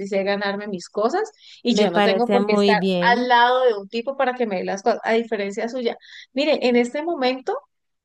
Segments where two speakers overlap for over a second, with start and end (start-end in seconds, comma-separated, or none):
1.7-3.3